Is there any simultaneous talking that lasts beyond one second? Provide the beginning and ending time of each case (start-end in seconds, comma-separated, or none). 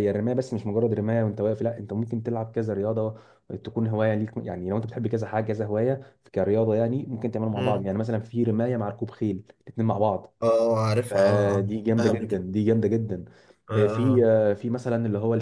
11.1-12.4